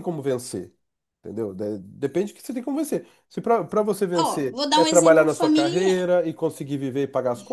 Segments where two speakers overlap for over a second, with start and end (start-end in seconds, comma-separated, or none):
4.2-5.9